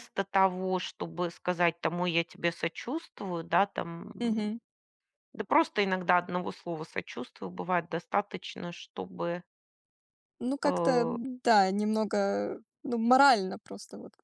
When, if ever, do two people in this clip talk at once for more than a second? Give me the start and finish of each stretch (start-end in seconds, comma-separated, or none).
none